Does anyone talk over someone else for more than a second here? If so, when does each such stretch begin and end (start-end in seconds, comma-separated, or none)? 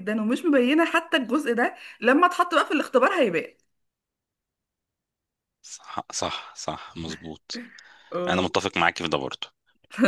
none